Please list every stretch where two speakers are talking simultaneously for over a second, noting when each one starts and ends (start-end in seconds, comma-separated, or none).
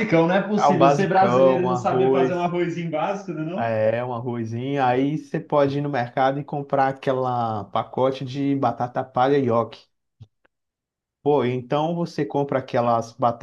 0.6-2.5